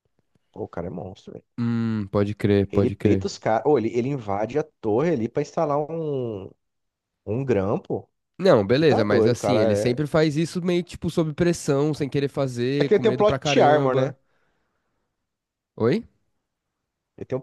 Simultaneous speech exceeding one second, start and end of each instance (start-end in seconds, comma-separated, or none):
8.7-10.0, 12.8-14.1